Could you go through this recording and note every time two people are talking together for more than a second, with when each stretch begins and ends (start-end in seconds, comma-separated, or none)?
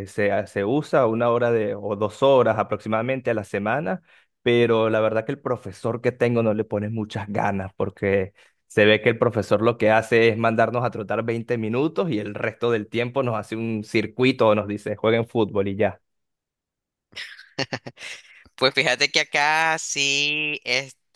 none